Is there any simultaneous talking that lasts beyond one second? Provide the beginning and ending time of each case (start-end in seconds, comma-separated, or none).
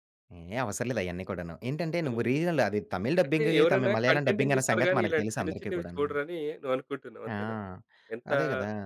3.3-6.1